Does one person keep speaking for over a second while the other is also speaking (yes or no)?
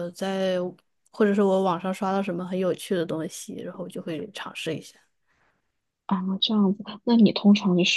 no